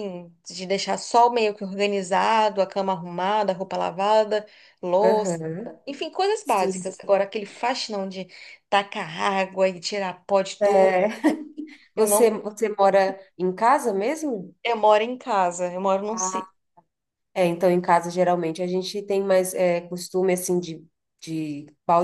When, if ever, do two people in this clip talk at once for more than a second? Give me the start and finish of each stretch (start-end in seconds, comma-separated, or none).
none